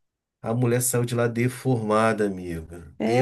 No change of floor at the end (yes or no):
no